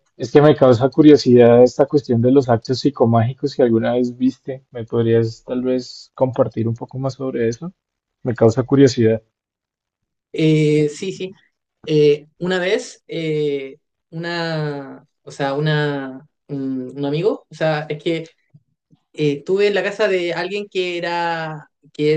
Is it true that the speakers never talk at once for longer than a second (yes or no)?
yes